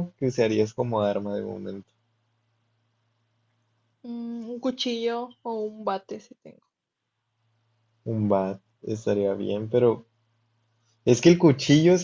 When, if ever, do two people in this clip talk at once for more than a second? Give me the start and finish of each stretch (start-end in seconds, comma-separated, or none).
none